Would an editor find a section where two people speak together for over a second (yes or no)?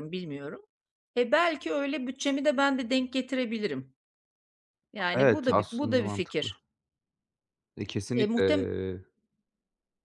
yes